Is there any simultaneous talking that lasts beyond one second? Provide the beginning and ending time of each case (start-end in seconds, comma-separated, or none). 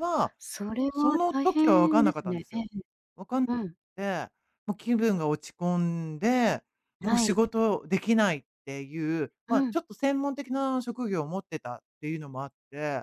0.9-2.6